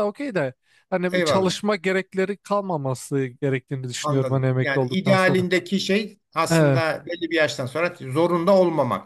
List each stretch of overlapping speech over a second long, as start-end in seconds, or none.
4.0-5.5